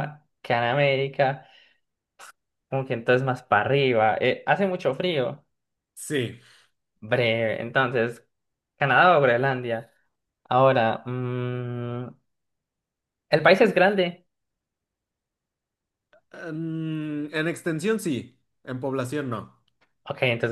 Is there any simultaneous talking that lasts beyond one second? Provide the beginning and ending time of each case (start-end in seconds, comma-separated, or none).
none